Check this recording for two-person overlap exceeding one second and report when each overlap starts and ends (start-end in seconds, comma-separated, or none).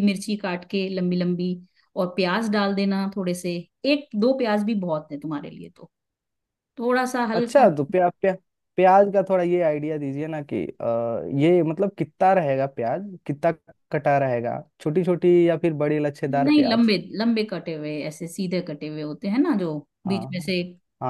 none